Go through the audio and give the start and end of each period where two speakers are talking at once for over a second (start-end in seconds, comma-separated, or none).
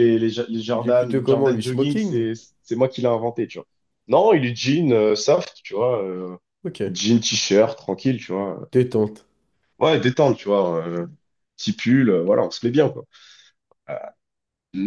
0.8-2.3